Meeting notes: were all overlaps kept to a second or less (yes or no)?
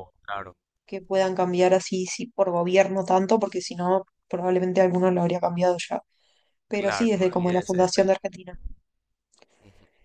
no